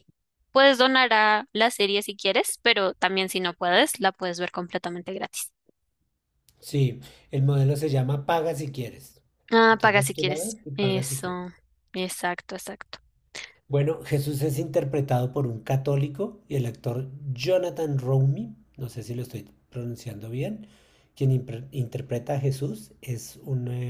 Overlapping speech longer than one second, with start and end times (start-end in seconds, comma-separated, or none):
9.7-11.3